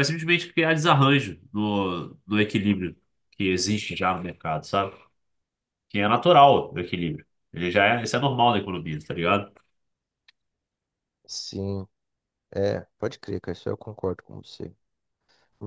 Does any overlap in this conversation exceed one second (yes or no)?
no